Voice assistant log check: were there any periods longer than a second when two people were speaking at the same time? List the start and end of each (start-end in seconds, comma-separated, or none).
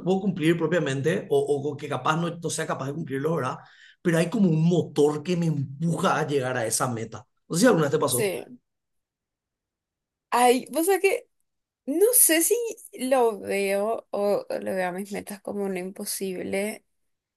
none